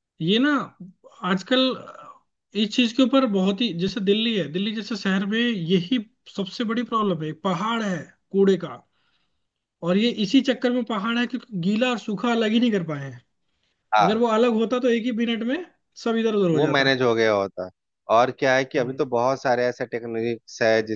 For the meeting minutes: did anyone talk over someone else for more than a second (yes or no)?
no